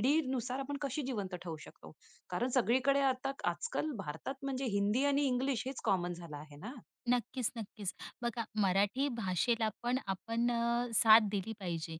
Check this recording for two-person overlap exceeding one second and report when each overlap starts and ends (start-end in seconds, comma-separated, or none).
none